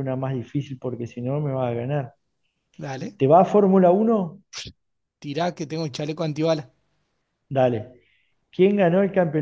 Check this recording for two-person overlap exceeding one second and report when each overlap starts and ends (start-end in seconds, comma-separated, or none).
none